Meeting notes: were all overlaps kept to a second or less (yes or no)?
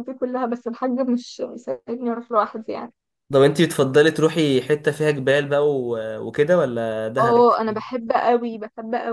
yes